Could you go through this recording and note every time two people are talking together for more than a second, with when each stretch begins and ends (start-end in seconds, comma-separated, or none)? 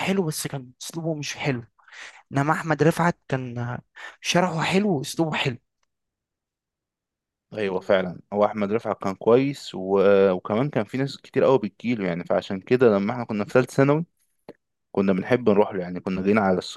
none